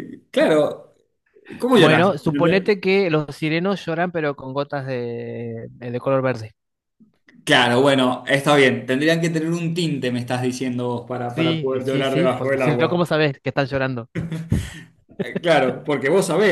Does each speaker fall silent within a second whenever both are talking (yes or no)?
no